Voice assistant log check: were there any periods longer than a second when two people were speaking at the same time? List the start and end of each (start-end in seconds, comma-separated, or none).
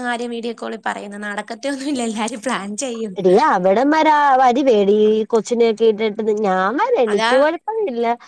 none